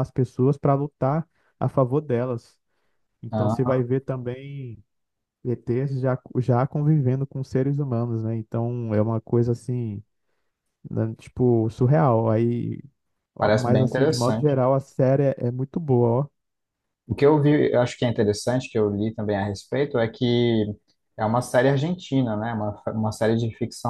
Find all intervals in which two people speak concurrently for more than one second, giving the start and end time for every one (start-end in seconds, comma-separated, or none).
13.4-14.6